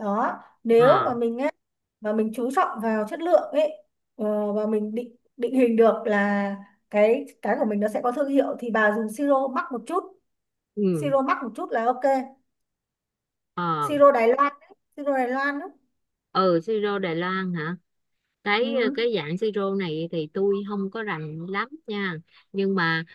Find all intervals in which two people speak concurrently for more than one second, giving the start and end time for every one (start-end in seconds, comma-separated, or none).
none